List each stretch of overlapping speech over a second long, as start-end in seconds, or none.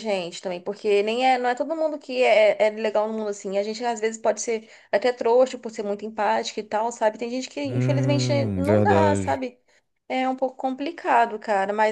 7.7-9.4